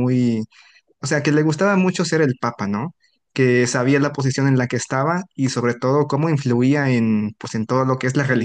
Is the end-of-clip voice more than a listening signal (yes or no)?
yes